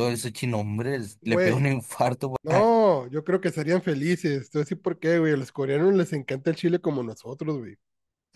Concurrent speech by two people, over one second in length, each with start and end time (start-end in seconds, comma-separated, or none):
none